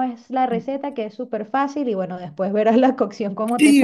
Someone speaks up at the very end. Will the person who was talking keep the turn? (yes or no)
no